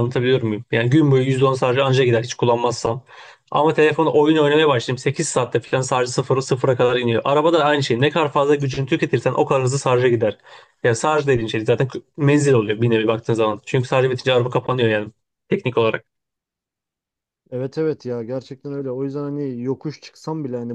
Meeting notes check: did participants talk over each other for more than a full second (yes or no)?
no